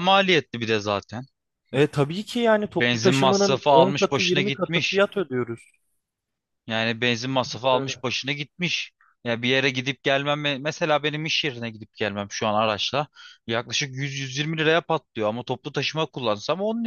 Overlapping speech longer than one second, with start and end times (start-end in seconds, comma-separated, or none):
2.6-5.0